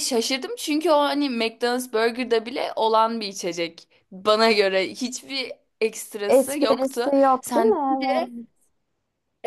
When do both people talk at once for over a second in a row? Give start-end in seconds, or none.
6.3-7.8